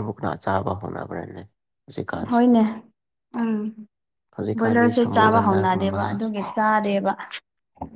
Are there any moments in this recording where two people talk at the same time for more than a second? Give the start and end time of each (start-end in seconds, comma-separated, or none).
4.6-6.0